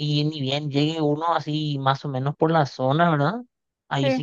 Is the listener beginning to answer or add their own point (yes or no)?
no